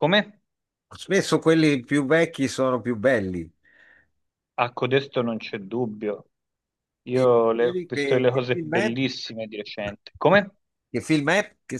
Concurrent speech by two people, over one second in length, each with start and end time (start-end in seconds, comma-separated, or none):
7.1-9.0